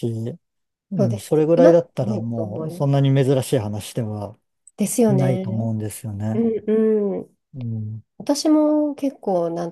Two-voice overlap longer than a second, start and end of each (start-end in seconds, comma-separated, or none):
1.0-3.0